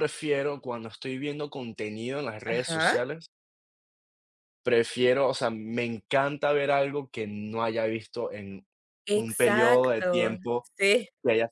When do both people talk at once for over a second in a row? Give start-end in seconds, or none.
9.1-10.4